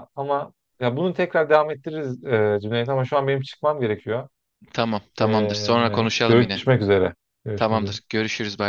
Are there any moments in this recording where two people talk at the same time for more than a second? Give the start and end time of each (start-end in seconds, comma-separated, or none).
5.2-6.6